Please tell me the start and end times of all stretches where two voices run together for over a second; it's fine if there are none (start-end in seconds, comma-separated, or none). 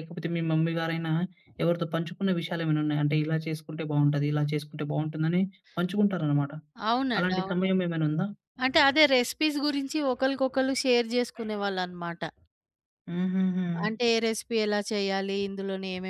none